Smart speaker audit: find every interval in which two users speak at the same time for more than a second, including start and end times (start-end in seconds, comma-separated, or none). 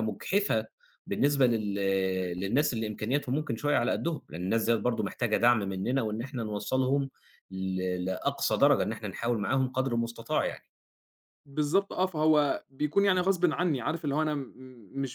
none